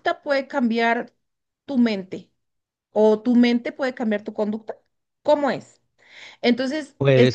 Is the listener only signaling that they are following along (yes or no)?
yes